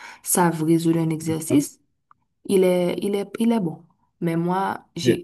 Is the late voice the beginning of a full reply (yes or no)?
no